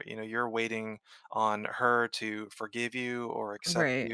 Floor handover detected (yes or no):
no